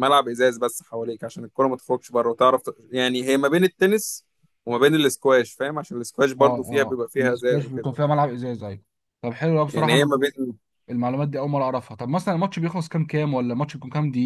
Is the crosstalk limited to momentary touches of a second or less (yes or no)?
no